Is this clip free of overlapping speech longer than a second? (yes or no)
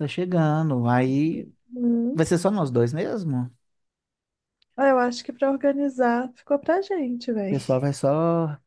yes